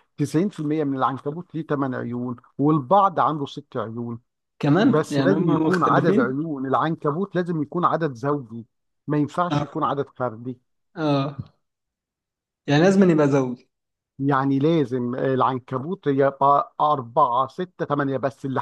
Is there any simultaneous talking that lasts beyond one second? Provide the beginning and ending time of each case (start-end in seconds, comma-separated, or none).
4.9-6.4